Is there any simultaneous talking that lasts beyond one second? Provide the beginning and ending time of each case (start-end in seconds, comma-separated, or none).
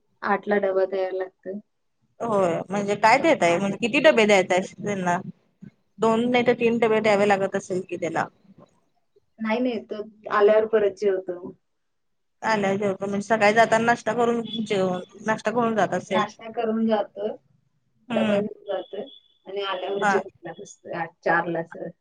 none